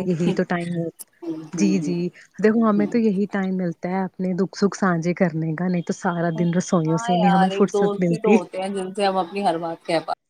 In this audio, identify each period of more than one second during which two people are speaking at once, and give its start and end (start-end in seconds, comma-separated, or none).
6.8-8.3